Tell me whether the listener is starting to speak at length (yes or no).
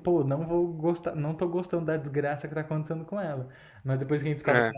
no